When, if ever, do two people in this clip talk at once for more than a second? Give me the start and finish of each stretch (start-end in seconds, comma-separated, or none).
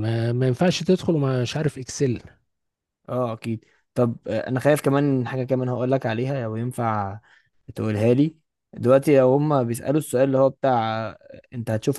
none